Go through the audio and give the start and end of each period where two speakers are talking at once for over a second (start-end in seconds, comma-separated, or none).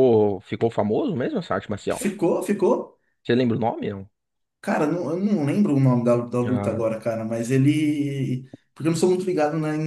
none